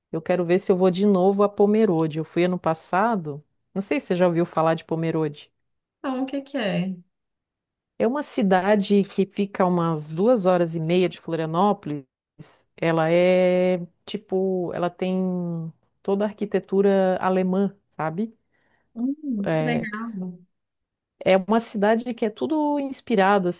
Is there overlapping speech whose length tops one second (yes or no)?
no